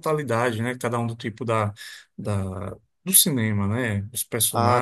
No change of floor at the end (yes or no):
no